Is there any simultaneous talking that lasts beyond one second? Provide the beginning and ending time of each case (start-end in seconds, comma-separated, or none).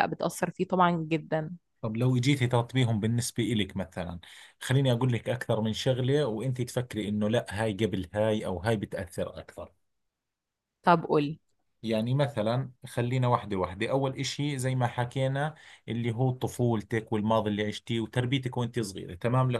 none